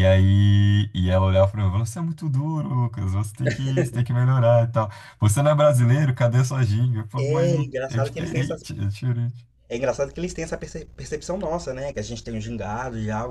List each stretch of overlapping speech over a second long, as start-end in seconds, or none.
7.2-8.6